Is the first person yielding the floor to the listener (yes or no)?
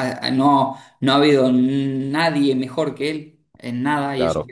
no